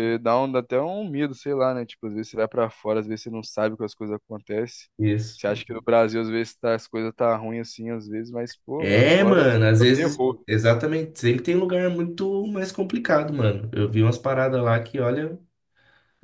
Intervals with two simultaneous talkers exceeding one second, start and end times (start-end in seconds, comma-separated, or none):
8.8-10.4